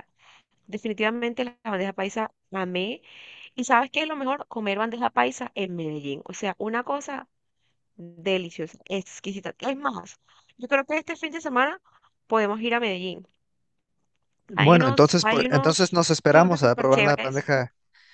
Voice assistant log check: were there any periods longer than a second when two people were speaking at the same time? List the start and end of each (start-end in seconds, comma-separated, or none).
14.6-17.5